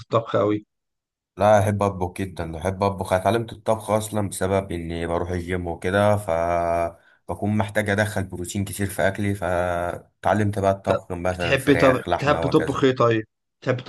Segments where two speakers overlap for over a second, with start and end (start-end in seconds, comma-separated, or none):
10.9-12.9